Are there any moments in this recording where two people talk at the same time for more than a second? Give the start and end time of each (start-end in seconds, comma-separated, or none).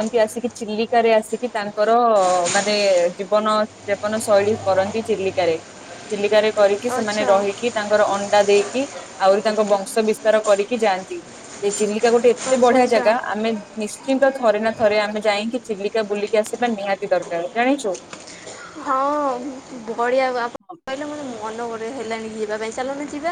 none